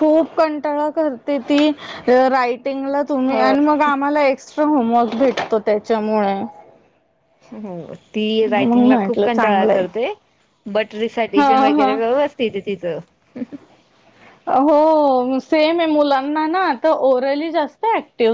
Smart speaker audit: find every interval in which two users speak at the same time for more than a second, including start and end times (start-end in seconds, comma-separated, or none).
8.4-9.8